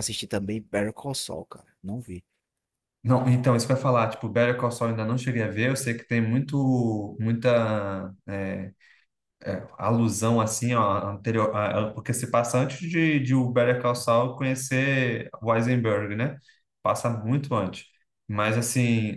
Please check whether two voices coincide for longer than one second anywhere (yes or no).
no